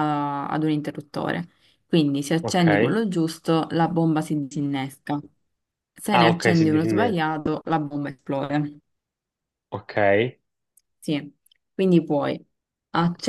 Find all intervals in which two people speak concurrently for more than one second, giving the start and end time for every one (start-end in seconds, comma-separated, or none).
6.1-7.3